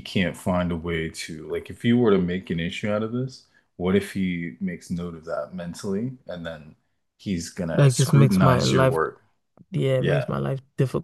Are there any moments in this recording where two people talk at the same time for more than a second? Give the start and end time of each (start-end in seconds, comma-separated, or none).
7.7-9.0